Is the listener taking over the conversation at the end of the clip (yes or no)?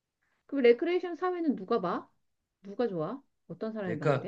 yes